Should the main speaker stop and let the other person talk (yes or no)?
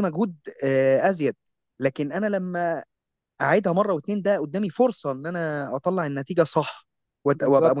no